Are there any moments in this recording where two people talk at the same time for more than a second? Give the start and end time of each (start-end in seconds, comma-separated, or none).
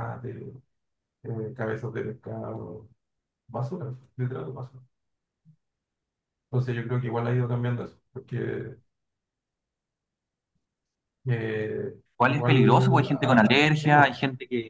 12.2-14.2